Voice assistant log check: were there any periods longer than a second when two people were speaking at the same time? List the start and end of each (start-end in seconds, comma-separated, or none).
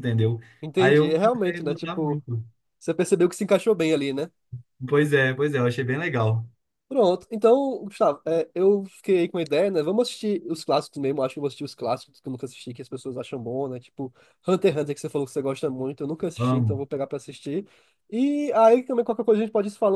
0.8-2.2